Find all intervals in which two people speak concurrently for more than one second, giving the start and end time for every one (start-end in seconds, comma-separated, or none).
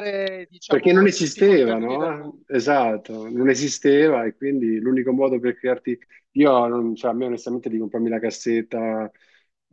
0.7-2.7